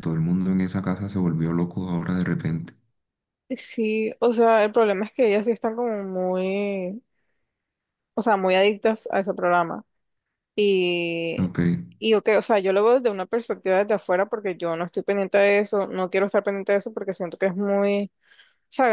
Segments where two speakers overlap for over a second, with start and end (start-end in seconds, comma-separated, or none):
none